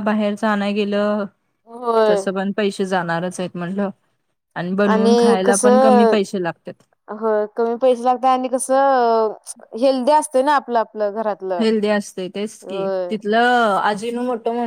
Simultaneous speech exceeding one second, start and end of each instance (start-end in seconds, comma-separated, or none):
none